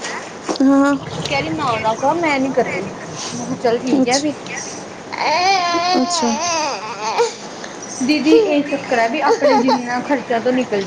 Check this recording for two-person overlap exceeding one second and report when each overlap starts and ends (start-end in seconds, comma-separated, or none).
none